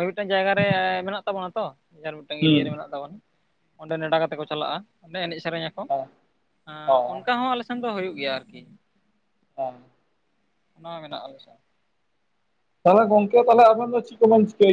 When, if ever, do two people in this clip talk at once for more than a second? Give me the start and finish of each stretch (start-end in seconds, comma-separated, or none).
none